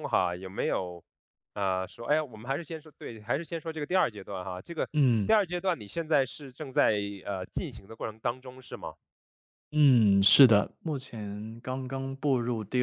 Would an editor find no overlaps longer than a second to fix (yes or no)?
yes